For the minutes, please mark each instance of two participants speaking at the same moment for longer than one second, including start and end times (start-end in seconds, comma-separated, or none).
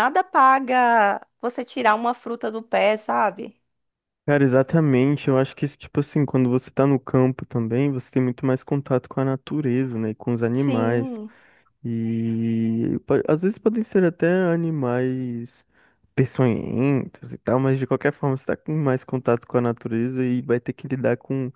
none